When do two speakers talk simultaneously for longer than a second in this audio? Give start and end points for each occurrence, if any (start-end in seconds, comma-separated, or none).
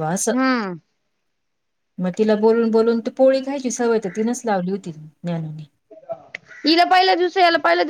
none